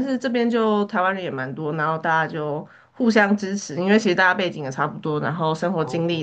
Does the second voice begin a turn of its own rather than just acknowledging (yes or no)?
no